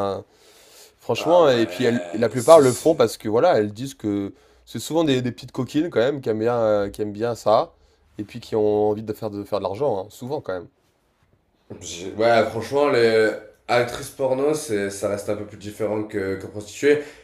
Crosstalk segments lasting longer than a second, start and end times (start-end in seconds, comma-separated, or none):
1.2-3.0